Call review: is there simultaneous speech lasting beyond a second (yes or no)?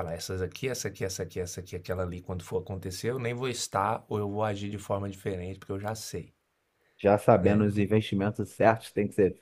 no